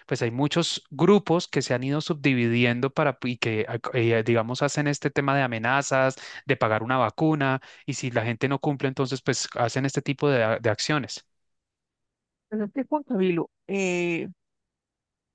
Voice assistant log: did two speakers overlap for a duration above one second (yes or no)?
no